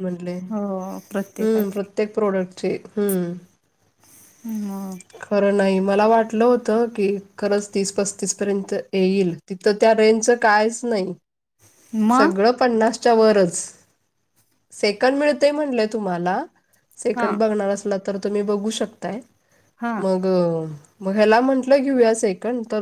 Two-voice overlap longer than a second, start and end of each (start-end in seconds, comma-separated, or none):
0.5-1.9